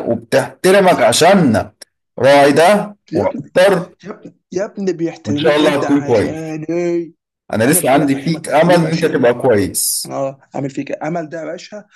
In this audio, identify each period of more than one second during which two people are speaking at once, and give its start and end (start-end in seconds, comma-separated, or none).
5.2-6.5, 7.7-9.2